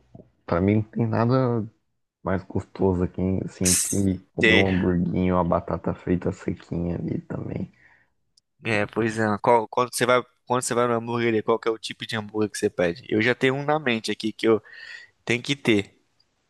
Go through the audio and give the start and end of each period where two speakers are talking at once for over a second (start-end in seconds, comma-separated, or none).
none